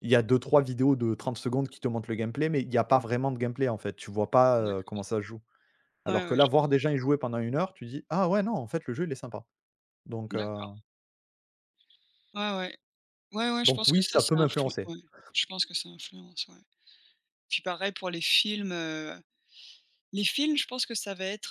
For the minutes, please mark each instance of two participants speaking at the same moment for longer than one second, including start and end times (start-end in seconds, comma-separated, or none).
13.6-14.9